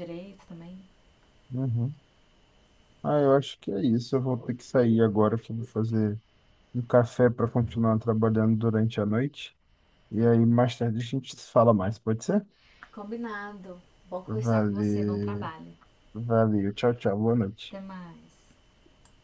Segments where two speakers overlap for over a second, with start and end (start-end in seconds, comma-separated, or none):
14.3-15.5